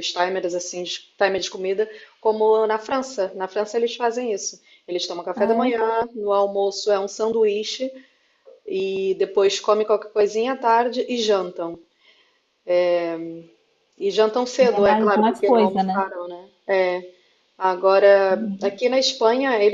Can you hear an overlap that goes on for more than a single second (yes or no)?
yes